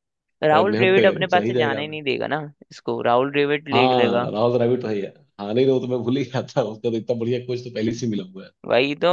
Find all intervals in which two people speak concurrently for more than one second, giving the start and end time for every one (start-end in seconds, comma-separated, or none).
0.5-1.8